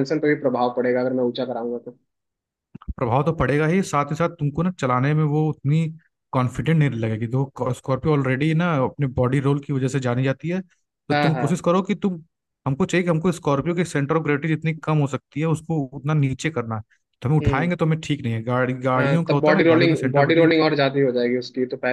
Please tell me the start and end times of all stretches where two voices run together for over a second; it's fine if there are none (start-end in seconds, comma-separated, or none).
19.0-20.6